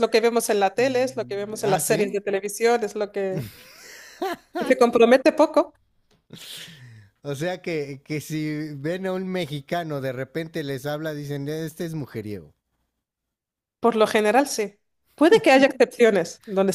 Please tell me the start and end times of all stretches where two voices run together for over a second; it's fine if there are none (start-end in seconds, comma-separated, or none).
0.8-2.1